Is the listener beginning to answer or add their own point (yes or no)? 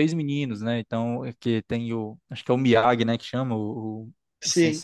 no